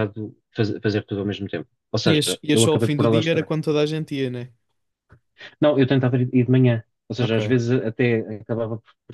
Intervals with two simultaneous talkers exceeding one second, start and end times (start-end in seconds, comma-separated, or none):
2.1-3.5